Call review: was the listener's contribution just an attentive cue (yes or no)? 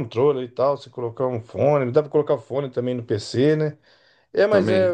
yes